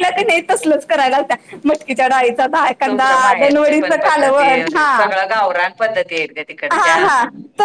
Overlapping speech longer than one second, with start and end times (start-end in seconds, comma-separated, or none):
2.9-4.9